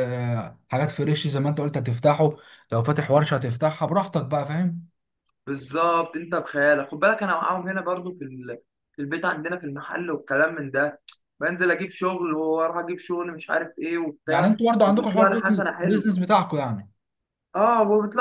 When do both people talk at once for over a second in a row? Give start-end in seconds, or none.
14.3-16.1